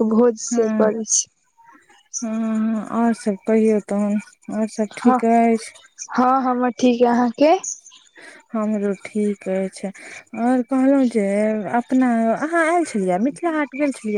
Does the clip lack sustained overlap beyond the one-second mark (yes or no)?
yes